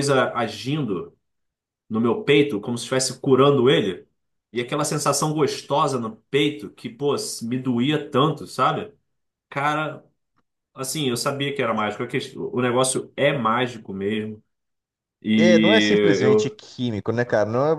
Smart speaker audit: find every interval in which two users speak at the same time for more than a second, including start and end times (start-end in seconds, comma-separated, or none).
15.3-16.6